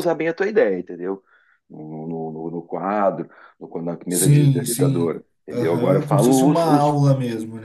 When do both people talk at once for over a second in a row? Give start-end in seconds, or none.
4.1-7.0